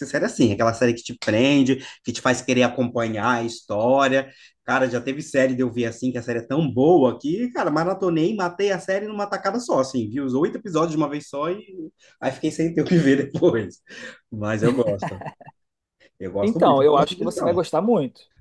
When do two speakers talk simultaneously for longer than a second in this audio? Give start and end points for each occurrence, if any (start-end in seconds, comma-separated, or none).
16.4-17.7